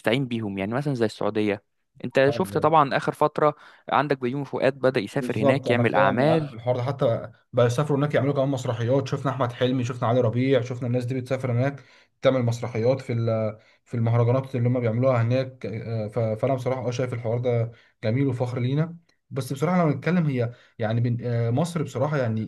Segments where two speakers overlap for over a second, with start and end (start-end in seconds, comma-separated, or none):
5.1-6.5